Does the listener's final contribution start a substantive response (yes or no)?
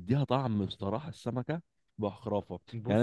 no